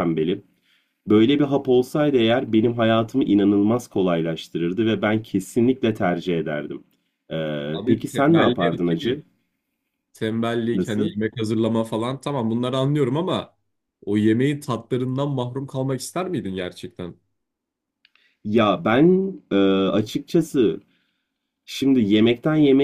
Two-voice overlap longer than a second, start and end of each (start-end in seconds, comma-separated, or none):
7.7-9.2